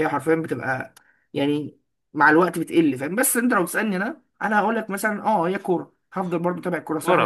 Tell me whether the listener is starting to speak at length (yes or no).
yes